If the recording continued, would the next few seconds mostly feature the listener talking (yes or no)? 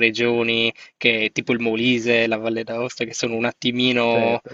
yes